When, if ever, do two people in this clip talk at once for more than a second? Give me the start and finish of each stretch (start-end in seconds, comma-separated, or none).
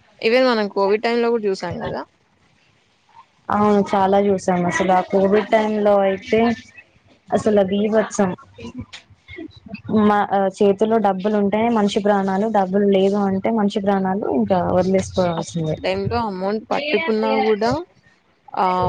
none